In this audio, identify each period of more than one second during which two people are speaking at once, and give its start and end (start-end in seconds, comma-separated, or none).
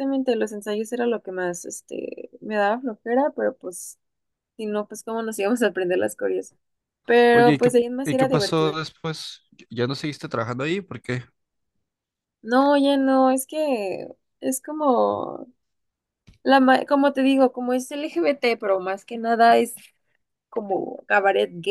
7.3-8.8